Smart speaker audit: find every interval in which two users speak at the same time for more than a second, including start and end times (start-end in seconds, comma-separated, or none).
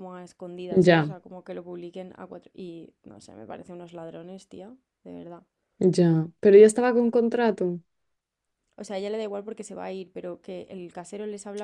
none